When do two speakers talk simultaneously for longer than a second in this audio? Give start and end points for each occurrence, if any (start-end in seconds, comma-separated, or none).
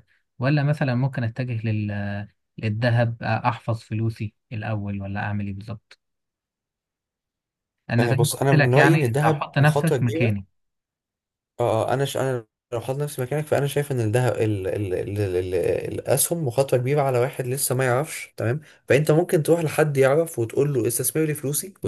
8.0-10.5